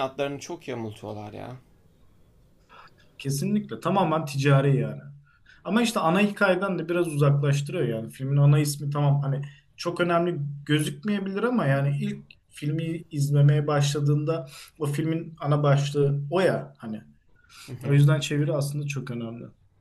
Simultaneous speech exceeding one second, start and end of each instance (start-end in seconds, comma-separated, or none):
none